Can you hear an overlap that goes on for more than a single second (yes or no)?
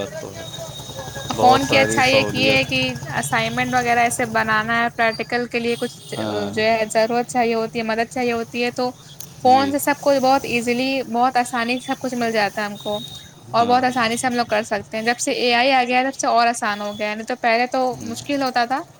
yes